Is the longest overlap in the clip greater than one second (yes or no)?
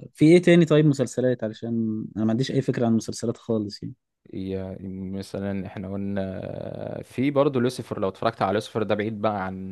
no